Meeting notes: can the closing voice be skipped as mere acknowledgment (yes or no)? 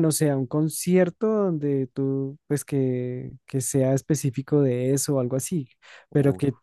yes